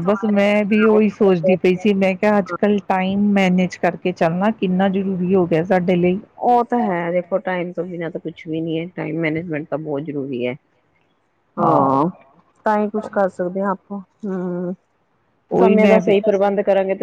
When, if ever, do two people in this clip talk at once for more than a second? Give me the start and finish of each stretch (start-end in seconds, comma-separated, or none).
none